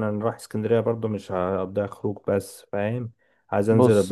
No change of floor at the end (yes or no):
yes